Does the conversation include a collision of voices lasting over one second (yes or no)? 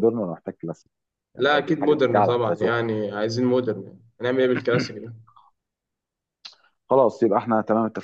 yes